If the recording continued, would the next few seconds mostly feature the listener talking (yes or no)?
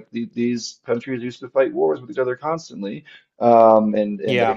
no